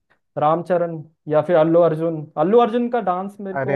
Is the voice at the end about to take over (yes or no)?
no